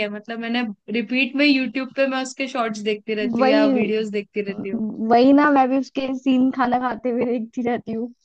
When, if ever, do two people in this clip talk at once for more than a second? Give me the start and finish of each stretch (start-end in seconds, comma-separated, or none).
none